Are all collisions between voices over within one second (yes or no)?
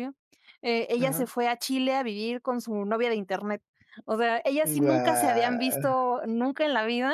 no